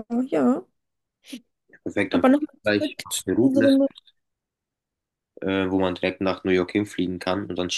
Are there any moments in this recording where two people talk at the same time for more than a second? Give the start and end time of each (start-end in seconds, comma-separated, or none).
2.1-3.8